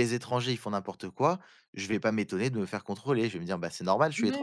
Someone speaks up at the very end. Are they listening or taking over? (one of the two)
taking over